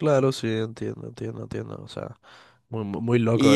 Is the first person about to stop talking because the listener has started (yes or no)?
yes